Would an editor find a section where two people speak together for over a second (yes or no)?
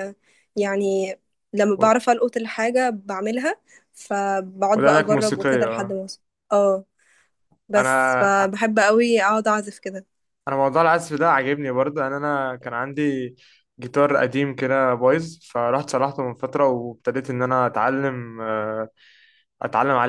yes